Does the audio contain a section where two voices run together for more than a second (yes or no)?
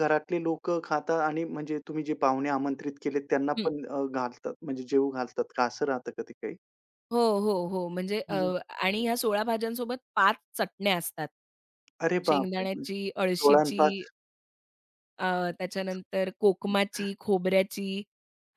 yes